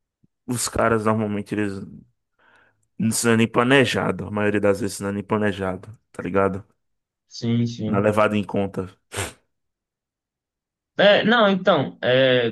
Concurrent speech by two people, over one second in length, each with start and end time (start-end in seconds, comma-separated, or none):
none